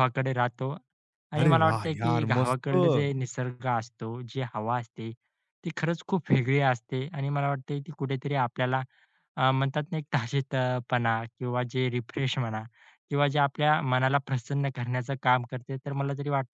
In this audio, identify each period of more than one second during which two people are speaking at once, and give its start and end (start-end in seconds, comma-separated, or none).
1.4-3.1